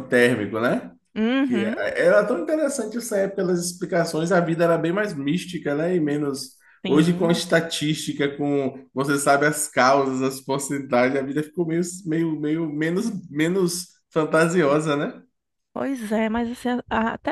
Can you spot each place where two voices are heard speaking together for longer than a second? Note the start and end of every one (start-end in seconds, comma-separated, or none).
none